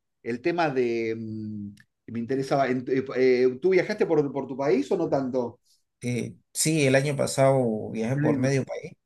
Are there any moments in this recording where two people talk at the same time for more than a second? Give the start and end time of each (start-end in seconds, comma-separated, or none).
none